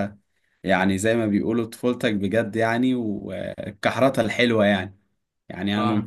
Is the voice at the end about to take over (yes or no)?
no